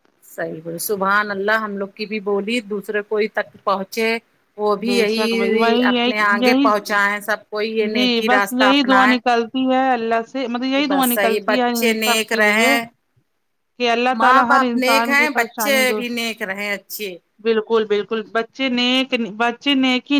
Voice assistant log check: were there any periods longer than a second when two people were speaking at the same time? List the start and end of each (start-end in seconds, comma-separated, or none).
4.8-6.7, 10.8-12.7, 14.2-16.0